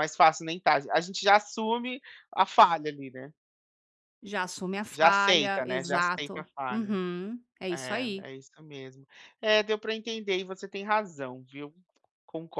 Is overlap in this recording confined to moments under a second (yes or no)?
no